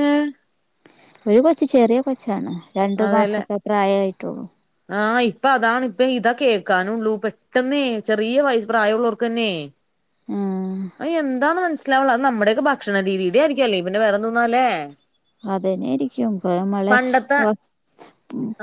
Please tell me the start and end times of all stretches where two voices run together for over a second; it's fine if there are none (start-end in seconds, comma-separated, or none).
none